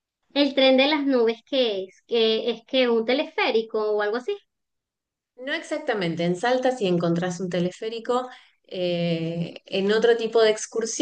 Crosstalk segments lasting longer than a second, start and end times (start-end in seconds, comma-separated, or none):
none